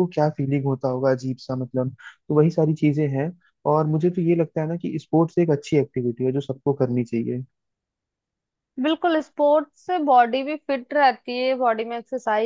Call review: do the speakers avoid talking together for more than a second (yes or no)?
yes